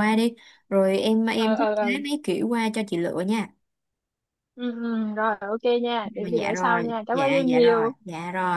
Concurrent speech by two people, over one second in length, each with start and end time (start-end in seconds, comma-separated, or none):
6.2-7.9